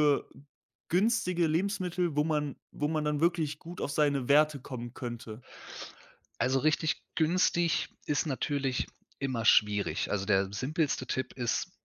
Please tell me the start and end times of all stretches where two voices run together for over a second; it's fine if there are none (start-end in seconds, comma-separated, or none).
none